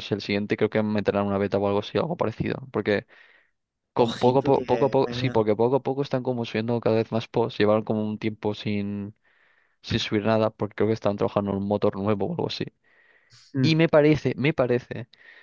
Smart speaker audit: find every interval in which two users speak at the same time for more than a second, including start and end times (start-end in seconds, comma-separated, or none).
4.0-5.5